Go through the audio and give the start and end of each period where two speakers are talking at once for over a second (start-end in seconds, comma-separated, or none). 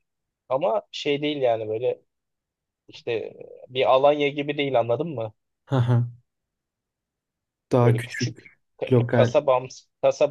7.8-9.3